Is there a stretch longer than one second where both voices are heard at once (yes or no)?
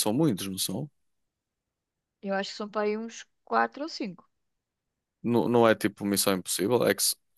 no